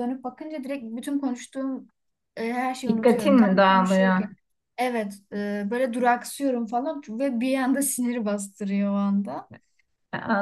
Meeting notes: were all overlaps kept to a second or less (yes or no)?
no